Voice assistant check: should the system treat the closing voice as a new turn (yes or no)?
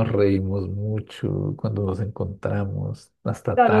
yes